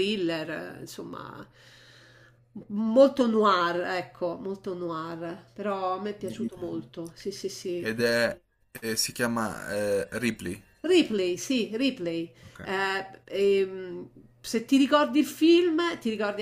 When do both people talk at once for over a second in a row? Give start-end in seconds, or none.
none